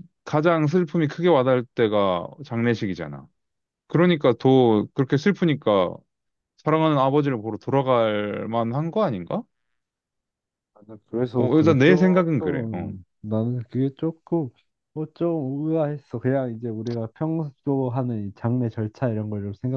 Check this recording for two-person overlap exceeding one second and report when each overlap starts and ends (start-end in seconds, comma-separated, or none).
11.3-12.9